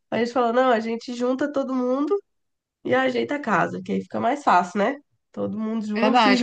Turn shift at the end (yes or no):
yes